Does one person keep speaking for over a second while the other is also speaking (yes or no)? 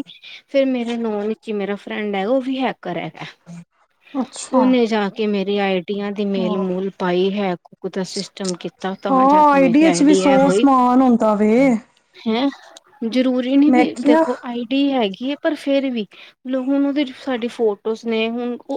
no